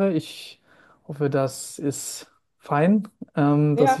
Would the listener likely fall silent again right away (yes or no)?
no